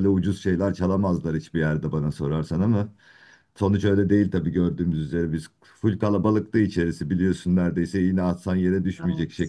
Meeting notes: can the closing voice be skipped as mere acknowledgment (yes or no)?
yes